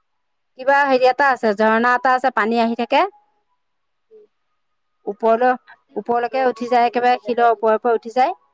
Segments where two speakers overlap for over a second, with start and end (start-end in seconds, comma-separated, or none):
6.0-7.7